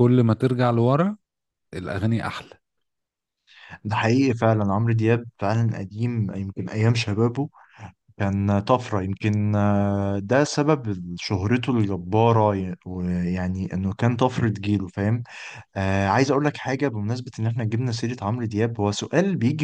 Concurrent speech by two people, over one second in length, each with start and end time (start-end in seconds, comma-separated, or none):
none